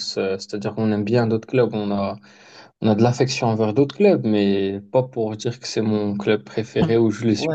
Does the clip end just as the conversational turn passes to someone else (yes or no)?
yes